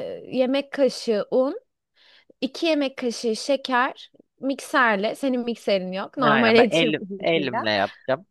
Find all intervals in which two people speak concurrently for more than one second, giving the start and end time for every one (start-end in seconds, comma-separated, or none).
6.2-7.7